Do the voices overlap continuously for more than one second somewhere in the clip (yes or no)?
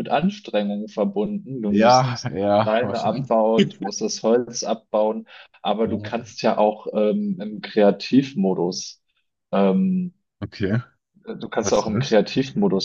yes